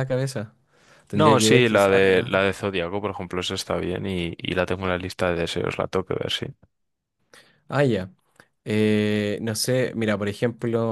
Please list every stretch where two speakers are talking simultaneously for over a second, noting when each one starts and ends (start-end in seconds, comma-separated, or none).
1.1-2.3